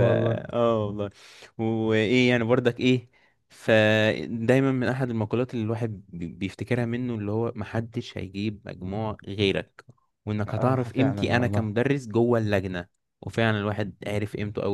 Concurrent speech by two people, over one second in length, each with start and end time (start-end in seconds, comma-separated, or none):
10.5-11.7